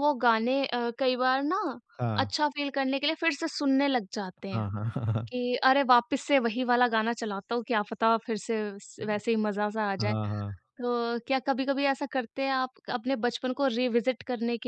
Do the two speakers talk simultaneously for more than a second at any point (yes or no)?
no